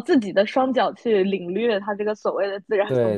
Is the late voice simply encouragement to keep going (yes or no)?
no